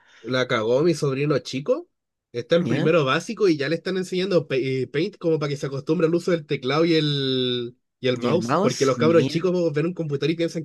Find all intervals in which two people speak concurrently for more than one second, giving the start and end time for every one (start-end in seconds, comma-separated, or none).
8.1-9.4